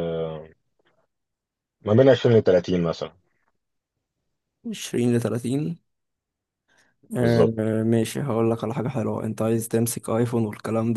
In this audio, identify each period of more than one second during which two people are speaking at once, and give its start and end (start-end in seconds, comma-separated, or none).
none